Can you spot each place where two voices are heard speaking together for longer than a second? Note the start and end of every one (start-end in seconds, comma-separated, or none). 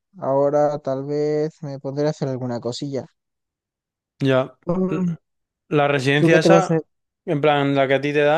none